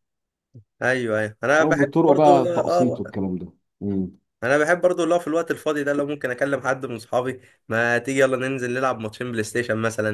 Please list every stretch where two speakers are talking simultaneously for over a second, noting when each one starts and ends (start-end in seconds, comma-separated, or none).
1.6-3.0